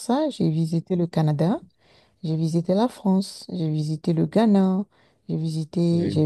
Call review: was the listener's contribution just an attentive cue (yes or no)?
yes